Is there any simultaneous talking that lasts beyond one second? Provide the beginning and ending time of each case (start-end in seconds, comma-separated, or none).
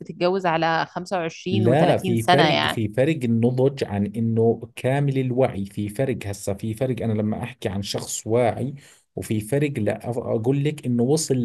1.5-2.8